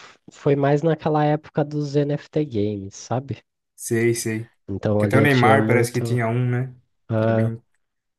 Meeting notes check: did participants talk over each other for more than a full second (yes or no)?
yes